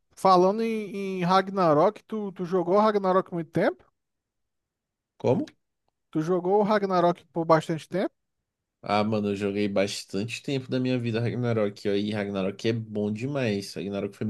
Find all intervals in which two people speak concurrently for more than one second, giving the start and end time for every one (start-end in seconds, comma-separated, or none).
none